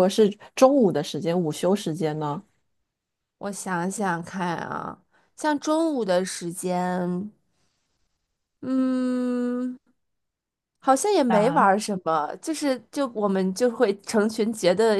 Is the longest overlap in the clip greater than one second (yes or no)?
no